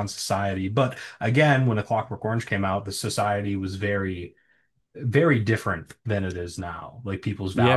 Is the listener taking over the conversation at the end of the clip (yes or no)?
yes